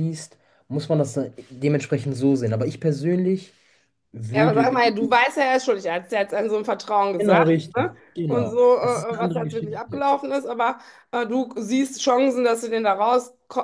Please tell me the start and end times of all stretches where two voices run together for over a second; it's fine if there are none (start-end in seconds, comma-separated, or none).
7.2-10.2